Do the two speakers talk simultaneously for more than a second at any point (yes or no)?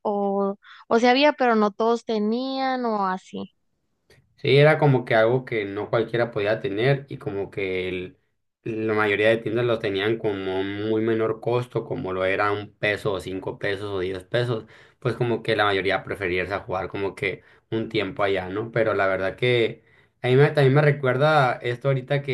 no